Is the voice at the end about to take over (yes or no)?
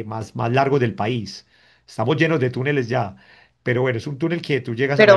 yes